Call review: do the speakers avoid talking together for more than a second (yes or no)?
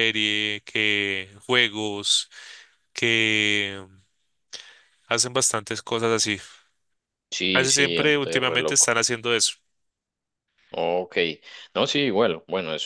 no